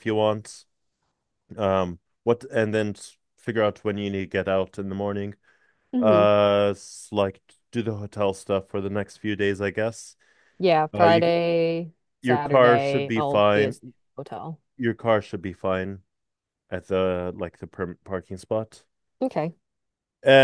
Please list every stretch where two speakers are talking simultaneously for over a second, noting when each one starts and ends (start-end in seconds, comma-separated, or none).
12.2-13.8